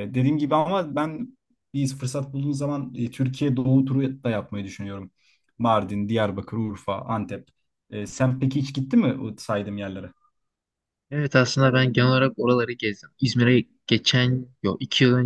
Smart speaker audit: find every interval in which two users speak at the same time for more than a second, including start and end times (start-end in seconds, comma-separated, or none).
none